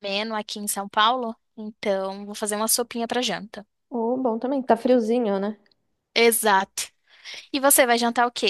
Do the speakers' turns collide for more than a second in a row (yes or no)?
no